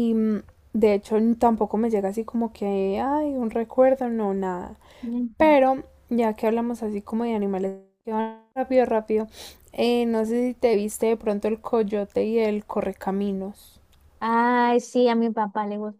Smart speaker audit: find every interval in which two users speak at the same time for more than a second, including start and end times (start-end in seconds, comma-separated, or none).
none